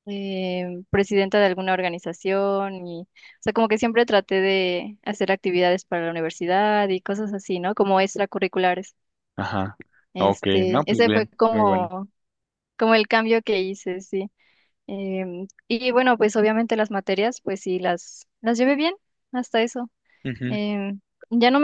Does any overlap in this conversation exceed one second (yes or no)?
yes